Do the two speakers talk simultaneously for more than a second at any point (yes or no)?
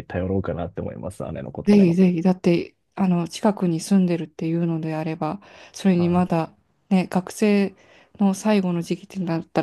no